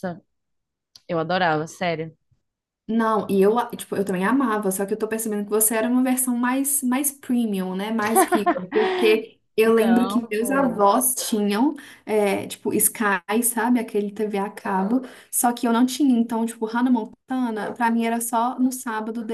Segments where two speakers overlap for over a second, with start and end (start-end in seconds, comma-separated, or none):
9.6-10.8